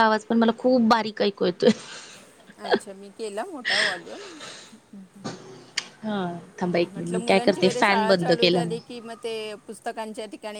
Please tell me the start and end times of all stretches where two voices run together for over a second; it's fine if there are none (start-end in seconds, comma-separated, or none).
6.9-8.8